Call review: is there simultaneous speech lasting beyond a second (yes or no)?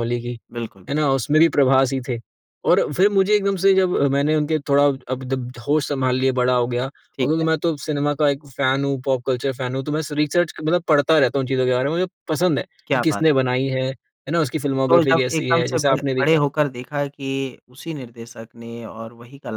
yes